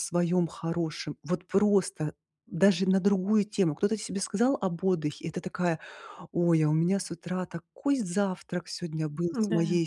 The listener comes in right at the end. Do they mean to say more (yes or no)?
no